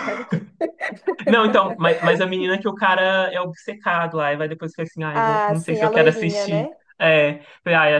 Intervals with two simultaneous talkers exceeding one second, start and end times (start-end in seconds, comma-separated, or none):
5.1-6.8